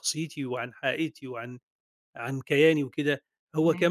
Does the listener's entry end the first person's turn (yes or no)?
no